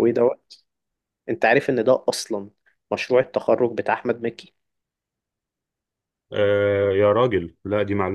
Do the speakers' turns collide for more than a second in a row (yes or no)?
no